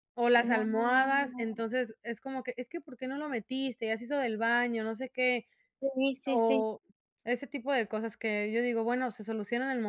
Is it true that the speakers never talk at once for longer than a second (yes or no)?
no